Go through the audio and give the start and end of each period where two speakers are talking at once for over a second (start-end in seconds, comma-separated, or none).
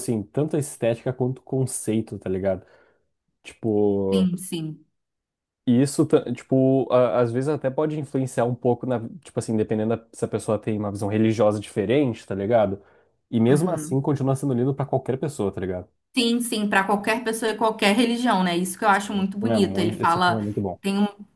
19.0-20.4